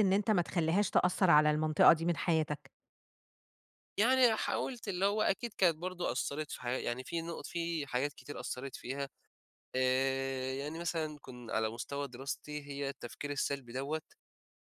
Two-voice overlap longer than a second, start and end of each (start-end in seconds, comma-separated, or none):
none